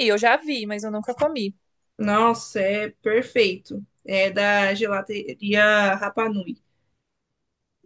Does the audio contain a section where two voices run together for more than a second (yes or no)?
no